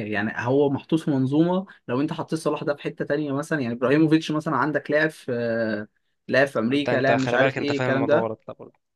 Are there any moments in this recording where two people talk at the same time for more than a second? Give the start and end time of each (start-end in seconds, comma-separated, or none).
6.7-8.3